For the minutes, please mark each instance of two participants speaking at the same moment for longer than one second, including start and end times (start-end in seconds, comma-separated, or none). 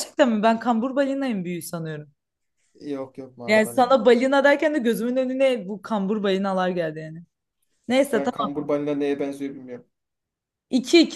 none